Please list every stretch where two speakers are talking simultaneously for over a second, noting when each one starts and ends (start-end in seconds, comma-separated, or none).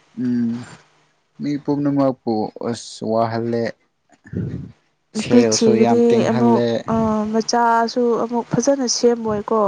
5.1-6.6